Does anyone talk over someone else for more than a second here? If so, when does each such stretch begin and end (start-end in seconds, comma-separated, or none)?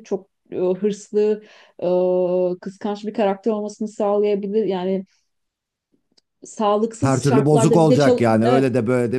7.0-8.7